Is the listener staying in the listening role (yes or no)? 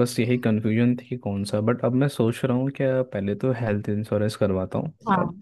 yes